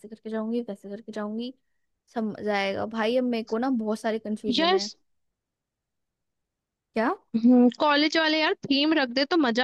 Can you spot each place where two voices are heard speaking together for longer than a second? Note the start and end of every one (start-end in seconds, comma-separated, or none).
none